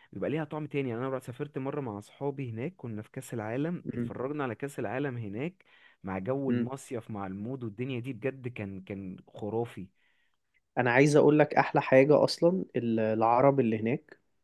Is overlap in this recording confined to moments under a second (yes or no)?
yes